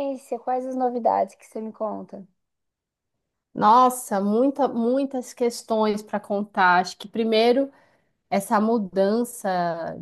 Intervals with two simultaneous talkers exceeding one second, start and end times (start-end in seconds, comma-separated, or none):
none